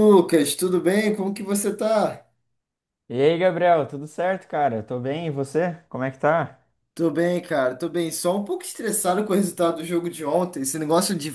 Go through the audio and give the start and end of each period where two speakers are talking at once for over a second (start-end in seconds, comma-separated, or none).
none